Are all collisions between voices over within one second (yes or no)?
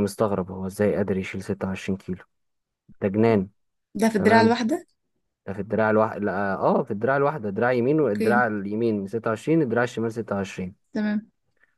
yes